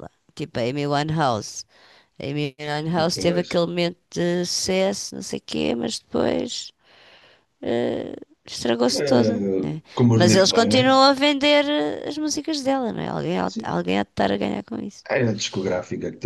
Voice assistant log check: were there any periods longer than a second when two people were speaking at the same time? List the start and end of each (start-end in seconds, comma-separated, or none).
8.9-10.8